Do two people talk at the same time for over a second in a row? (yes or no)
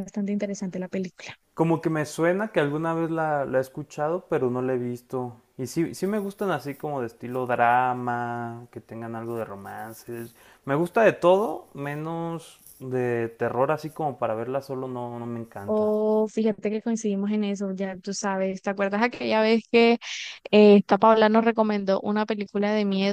no